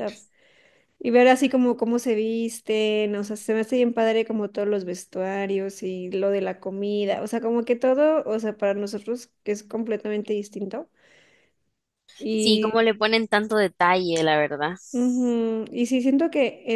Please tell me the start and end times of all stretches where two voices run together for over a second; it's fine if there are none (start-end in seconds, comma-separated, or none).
none